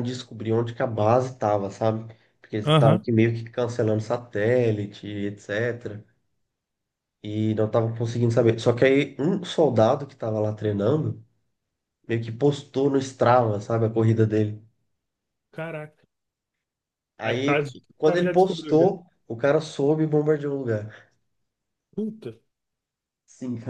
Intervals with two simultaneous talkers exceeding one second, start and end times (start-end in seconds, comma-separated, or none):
17.2-18.9